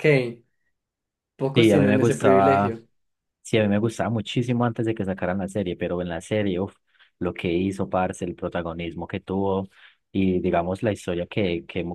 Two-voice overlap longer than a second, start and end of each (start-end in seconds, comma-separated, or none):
1.5-2.7